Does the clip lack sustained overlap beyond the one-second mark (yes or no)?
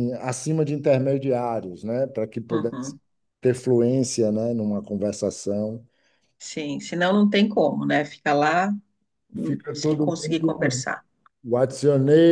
no